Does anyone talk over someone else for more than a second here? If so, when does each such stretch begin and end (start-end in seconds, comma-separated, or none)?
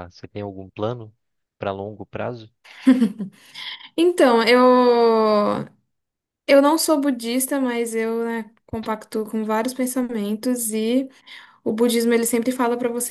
none